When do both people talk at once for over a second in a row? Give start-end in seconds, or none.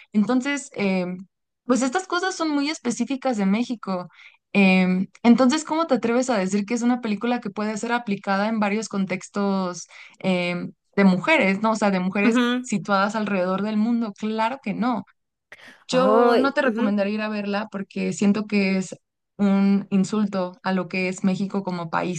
15.9-17.1